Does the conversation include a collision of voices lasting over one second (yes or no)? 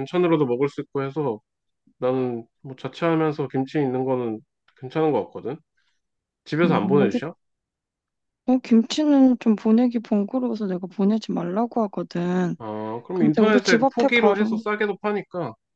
yes